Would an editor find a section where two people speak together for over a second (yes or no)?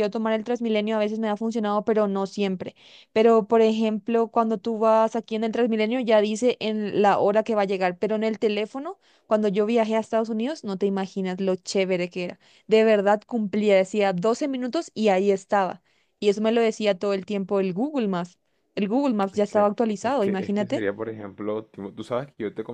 yes